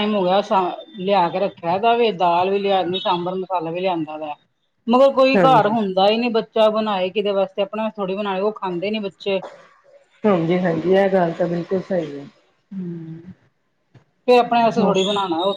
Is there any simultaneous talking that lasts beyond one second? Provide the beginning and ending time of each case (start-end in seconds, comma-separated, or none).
none